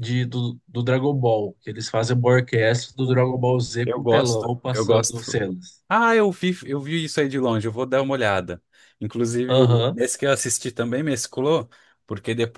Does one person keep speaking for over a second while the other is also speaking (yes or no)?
yes